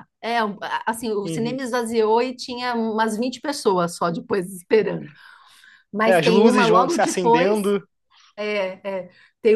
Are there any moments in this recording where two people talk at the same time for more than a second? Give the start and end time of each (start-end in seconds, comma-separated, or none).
6.0-7.6